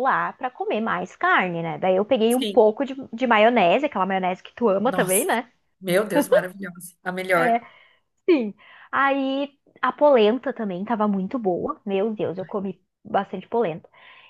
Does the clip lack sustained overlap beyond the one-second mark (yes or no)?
yes